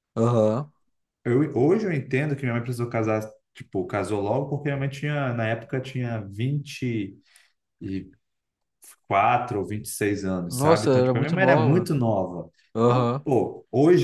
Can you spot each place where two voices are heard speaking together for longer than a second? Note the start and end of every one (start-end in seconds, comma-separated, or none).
10.5-11.9